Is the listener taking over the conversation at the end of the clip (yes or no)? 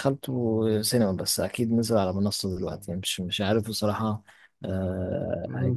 no